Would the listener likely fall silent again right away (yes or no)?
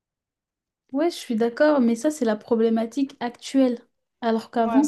yes